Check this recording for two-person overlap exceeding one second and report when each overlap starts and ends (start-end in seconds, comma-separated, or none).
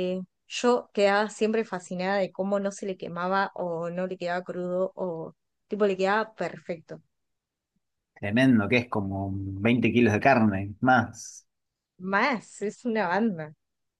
none